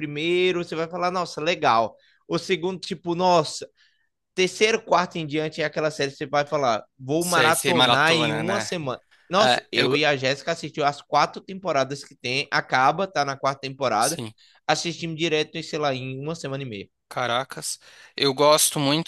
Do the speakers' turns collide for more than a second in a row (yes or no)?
yes